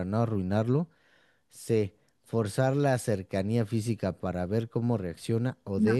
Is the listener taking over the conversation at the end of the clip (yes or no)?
no